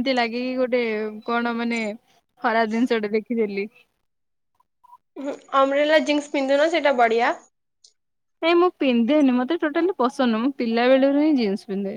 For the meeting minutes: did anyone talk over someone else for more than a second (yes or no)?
no